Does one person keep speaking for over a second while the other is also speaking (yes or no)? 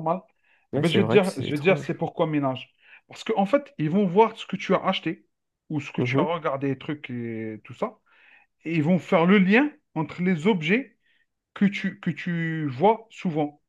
yes